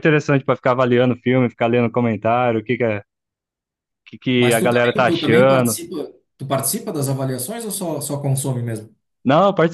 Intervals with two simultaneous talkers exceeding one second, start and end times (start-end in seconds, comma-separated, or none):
4.4-5.8